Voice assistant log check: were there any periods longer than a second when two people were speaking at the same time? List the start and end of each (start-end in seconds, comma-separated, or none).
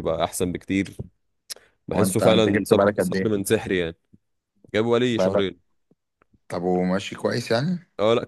1.9-3.4